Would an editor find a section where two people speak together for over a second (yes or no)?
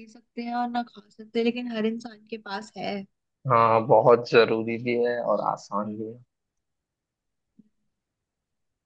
no